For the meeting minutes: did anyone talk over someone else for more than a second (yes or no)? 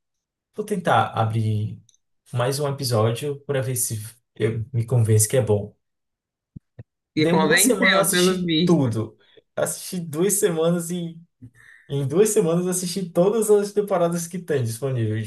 yes